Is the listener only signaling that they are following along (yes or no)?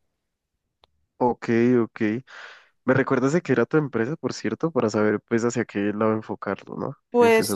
no